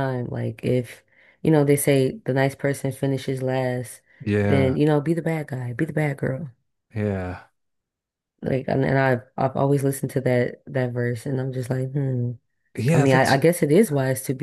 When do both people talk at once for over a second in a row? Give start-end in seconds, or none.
none